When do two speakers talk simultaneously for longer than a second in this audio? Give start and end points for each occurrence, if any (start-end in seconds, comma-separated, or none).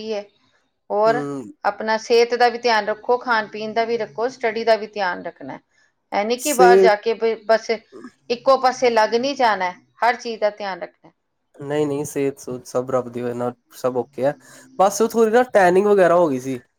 none